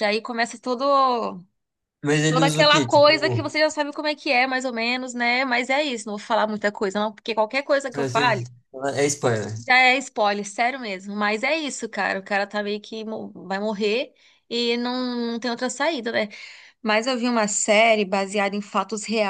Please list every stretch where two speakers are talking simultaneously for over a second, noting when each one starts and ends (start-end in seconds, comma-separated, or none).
2.3-3.5